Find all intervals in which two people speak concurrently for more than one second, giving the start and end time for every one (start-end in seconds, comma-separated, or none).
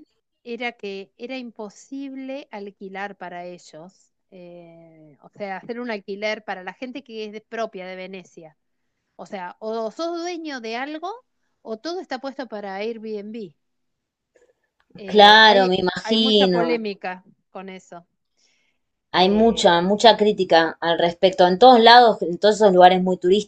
15.1-16.8